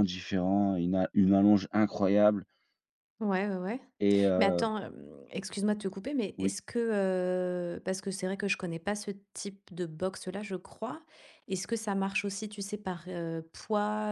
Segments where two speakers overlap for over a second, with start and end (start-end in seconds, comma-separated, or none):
none